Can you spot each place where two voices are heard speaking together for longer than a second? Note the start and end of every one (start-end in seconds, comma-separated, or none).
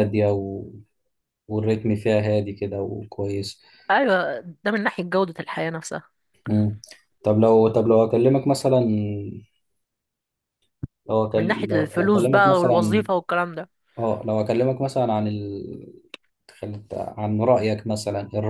11.3-13.1